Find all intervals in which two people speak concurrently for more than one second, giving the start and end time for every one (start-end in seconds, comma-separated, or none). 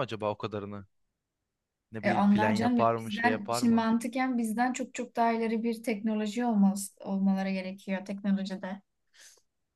2.0-3.9